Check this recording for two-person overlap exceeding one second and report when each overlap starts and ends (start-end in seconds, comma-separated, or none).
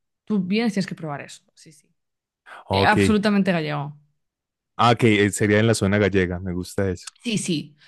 none